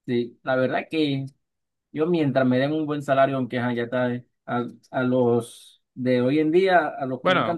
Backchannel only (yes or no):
yes